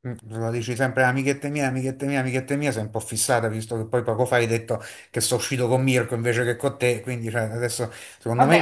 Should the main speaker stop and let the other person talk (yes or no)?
yes